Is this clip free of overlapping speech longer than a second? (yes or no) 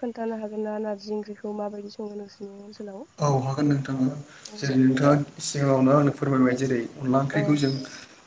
yes